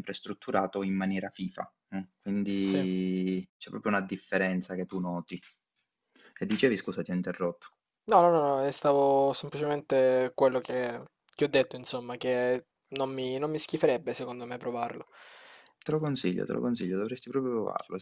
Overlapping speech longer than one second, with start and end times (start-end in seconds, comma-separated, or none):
none